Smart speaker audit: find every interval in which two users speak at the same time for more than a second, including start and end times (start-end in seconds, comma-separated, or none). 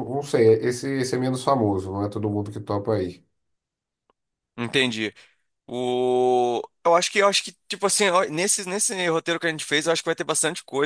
none